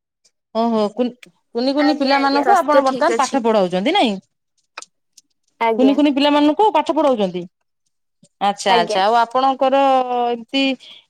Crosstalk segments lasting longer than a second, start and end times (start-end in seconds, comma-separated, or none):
1.9-3.4